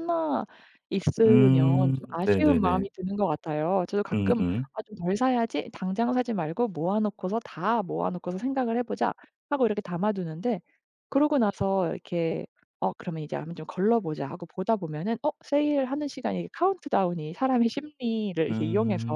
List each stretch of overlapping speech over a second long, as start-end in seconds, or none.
1.3-2.9